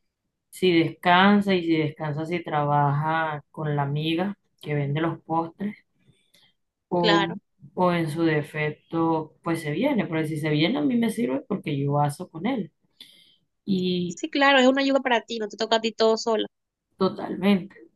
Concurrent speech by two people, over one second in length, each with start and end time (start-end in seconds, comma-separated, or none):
none